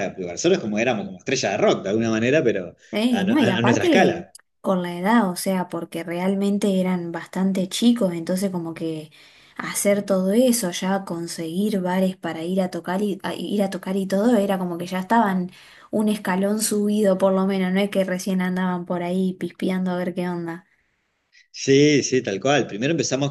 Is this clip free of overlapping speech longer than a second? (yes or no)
no